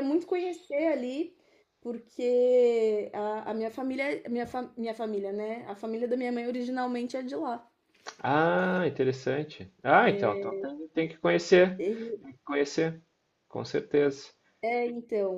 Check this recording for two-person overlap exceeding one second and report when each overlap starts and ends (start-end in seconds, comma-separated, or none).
none